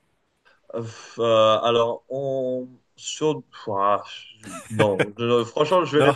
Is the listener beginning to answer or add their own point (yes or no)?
no